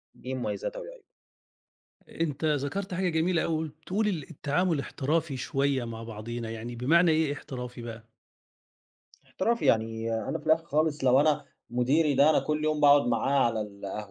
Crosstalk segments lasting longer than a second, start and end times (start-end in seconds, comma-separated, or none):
none